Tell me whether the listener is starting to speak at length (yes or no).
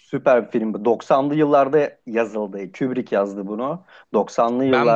yes